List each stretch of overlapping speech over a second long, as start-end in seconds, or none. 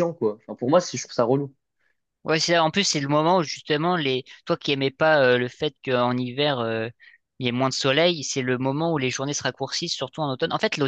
none